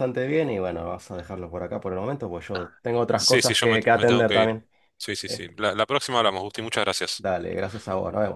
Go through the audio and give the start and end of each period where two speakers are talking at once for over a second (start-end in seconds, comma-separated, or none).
3.1-4.6